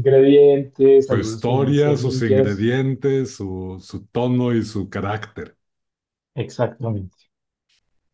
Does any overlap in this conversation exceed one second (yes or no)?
yes